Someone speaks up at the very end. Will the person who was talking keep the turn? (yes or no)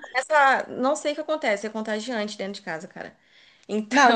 no